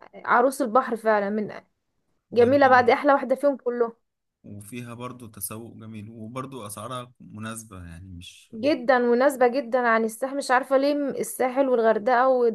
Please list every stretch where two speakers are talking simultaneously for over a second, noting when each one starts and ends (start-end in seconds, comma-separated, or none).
none